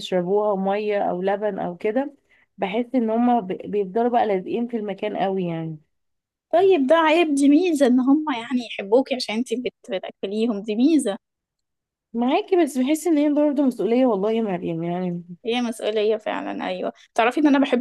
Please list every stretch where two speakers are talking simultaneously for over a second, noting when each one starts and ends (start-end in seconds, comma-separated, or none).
none